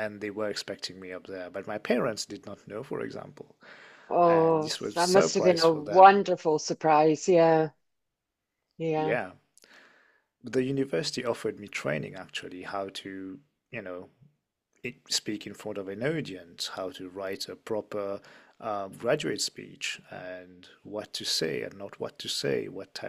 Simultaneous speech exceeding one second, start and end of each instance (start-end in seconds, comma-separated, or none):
4.2-6.2